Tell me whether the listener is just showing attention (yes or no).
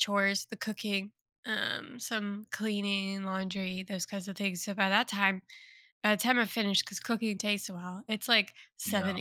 yes